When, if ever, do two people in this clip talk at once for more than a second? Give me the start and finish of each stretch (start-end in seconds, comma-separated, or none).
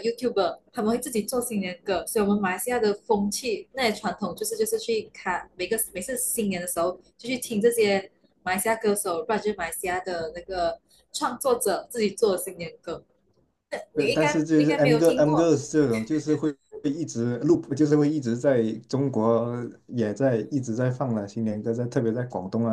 14.0-15.5